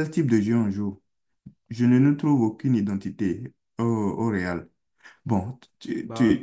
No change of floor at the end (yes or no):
yes